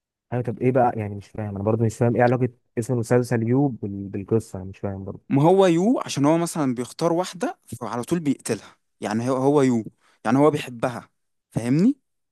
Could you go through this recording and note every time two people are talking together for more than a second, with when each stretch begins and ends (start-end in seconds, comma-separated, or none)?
none